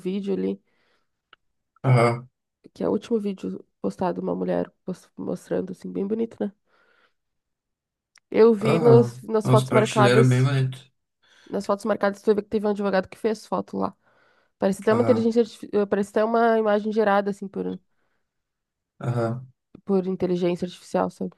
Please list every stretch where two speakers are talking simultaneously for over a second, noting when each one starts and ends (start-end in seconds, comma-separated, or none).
8.6-10.5